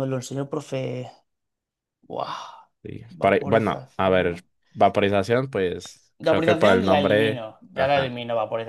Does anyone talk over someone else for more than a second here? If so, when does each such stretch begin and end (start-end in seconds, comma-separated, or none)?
3.1-4.4, 6.2-8.2